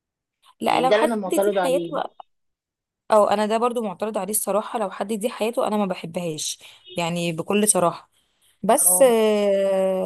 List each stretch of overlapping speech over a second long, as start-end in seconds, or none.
0.6-2.0